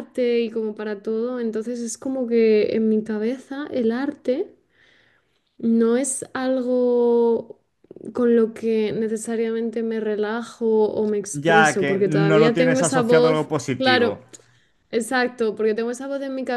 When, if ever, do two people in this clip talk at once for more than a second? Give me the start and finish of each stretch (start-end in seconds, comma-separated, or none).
11.3-14.2